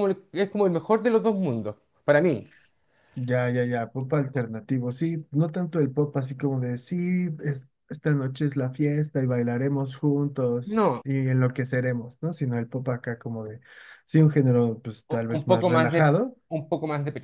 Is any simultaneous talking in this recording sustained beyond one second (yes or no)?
yes